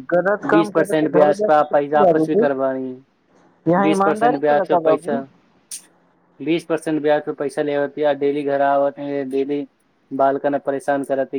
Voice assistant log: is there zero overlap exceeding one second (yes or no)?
no